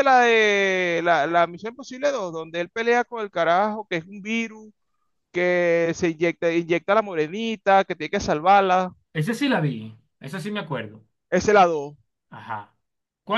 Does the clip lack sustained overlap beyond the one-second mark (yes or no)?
yes